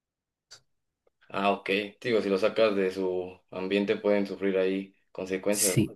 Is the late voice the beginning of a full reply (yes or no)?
yes